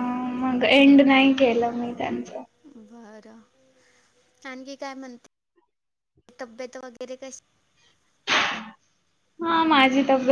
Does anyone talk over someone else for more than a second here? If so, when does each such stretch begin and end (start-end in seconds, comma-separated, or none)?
none